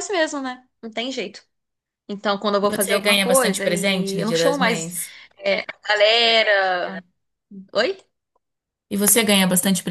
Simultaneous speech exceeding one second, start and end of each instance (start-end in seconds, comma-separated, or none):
2.6-4.9